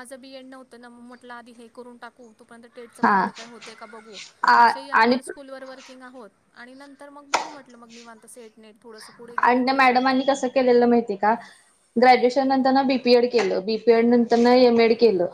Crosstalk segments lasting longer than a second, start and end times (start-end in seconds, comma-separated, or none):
none